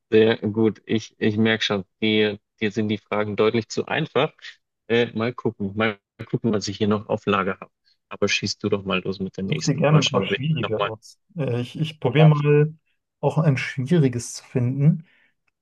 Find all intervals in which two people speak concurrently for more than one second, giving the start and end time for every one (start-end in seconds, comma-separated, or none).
9.5-10.9